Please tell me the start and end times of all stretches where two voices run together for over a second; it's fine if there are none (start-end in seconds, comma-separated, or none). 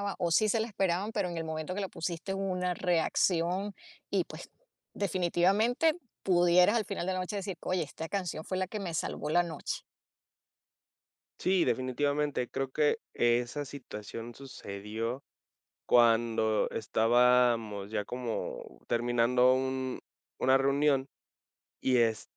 none